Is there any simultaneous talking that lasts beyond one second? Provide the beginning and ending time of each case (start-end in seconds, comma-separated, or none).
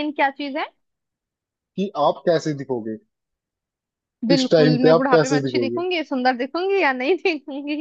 4.3-5.8